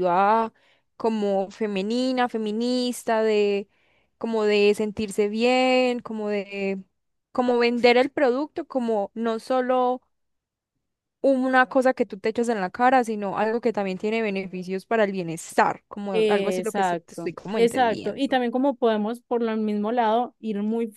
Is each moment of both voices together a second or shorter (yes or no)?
no